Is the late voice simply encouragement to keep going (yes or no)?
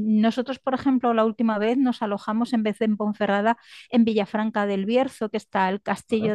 yes